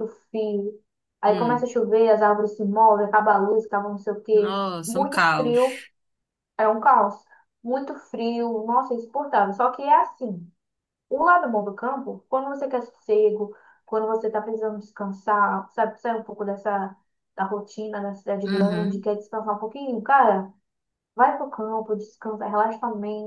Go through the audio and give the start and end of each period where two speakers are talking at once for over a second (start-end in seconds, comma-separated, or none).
4.3-5.8